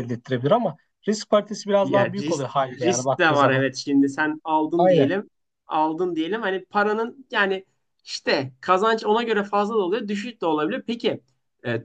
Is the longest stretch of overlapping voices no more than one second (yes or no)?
no